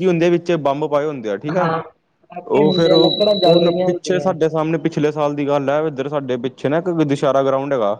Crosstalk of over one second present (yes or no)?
yes